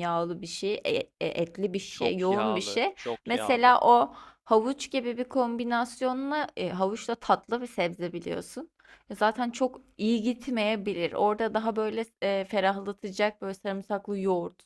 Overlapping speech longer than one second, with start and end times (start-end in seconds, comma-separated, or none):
1.9-3.8